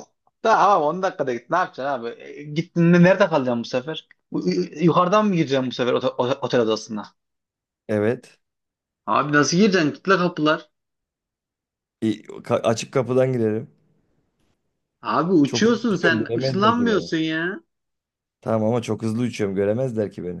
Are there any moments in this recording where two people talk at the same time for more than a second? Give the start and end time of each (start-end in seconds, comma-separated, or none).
15.4-17.1